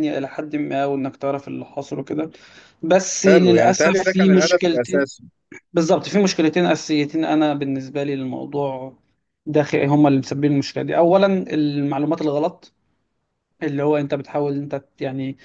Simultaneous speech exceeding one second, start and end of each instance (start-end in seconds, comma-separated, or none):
3.2-5.1